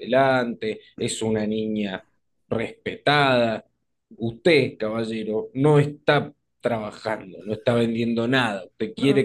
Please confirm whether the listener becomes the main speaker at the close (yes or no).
no